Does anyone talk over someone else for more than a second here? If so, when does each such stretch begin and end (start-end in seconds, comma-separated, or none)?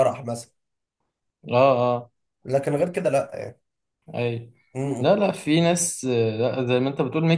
none